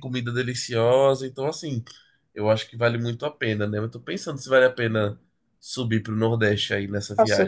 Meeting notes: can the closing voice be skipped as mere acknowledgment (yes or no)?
no